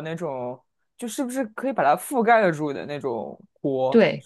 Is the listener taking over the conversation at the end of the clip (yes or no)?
yes